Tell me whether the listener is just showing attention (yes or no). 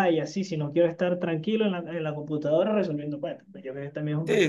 no